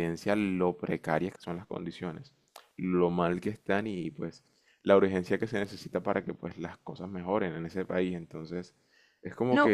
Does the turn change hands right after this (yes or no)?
yes